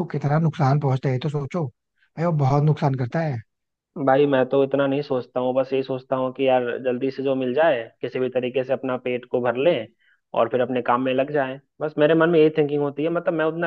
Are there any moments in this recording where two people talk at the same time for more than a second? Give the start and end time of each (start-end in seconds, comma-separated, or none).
none